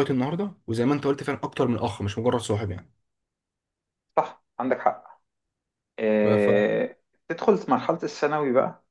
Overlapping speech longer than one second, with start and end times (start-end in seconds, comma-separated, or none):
none